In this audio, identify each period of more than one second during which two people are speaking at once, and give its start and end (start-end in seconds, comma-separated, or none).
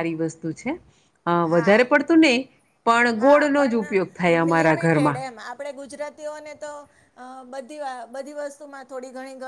3.2-5.2